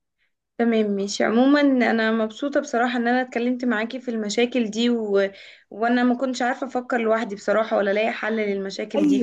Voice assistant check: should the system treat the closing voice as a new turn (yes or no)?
yes